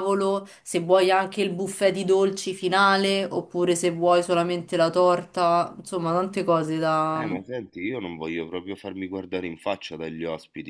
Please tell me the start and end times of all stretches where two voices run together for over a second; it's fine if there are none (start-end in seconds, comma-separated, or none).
none